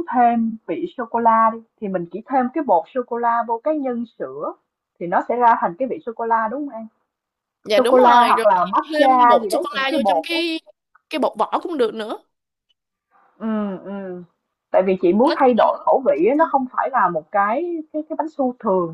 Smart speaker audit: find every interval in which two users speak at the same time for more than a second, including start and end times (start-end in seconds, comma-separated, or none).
7.8-10.4